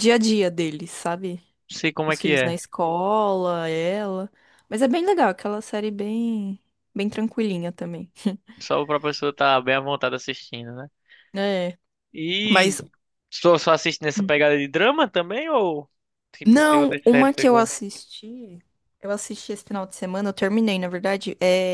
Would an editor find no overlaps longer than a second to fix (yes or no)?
no